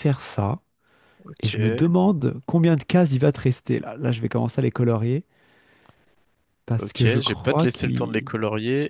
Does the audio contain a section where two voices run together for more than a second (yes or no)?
yes